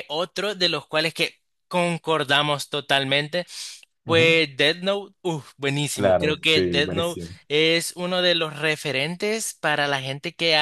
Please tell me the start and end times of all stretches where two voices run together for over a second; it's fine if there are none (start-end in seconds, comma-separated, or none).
5.9-7.4